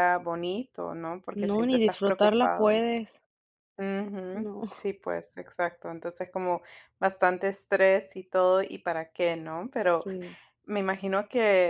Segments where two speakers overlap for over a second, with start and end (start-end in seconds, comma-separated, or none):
1.4-2.8